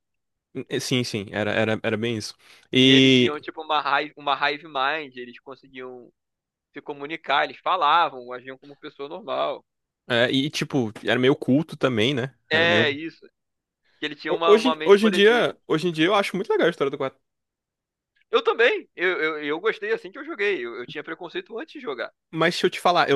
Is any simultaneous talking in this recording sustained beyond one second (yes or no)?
yes